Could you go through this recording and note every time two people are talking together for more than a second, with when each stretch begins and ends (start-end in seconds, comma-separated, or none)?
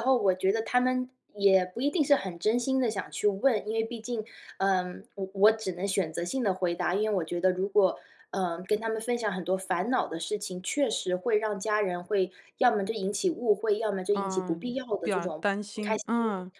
14.2-16.0